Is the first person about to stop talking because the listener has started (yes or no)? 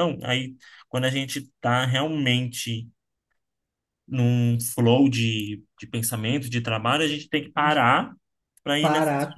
yes